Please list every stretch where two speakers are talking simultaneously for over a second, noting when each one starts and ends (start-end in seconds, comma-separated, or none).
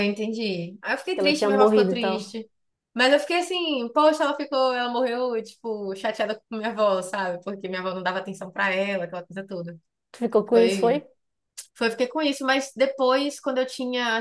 1.1-2.4